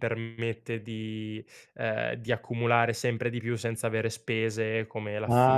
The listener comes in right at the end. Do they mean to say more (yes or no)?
yes